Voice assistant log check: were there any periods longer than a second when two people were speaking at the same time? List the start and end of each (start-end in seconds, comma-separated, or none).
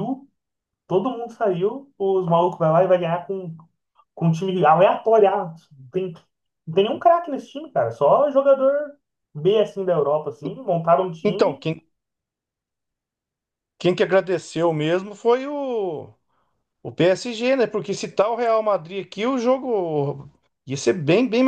none